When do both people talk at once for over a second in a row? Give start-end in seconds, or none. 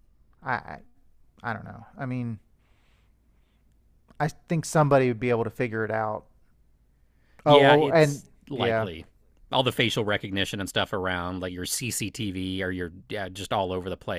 7.5-8.9